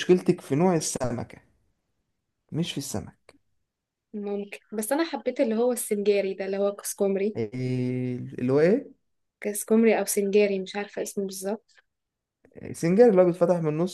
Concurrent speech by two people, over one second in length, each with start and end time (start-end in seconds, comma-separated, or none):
none